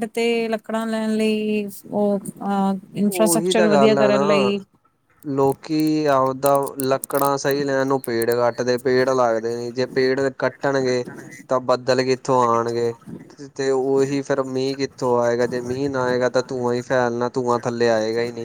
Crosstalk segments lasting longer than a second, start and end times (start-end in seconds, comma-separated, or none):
3.1-4.5